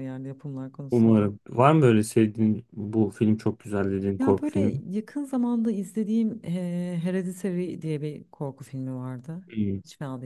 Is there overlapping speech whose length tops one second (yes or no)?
no